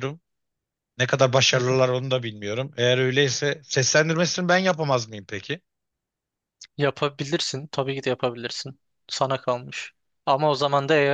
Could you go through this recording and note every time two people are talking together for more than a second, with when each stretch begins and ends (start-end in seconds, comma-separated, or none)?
none